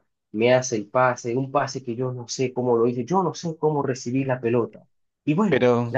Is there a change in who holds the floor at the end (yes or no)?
no